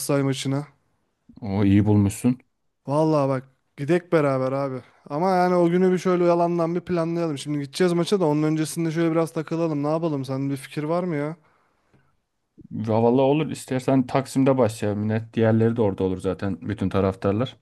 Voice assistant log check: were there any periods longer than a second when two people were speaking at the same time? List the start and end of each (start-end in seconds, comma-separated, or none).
none